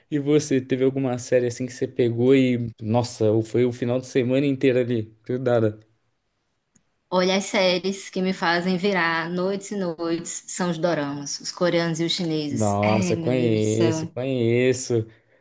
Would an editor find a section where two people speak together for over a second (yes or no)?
yes